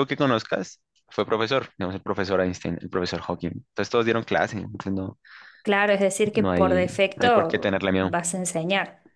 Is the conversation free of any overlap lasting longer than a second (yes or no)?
no